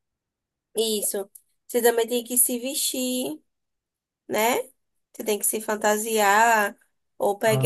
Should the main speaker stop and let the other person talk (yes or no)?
no